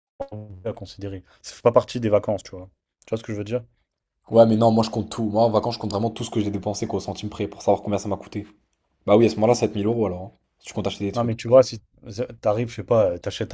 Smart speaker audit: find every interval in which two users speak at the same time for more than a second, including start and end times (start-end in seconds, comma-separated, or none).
none